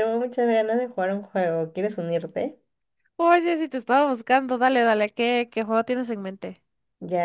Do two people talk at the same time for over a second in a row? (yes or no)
no